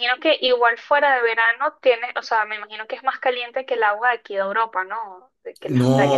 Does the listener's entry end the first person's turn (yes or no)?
yes